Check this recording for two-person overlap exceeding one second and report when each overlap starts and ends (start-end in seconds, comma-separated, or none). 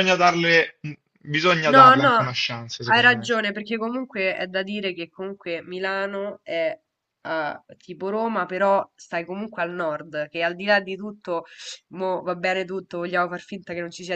none